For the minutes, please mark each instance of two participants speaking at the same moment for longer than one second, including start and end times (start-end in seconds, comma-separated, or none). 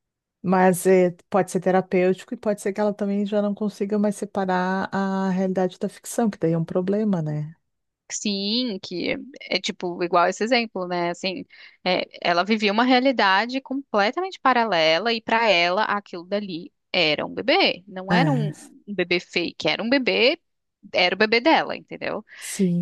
none